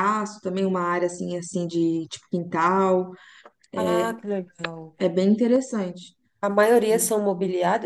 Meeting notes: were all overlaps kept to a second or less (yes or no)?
yes